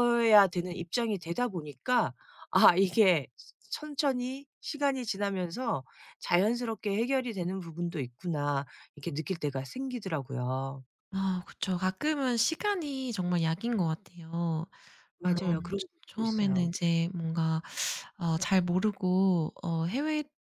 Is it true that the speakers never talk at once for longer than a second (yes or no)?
no